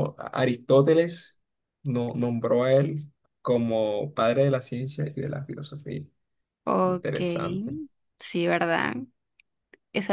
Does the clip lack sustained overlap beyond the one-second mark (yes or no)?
yes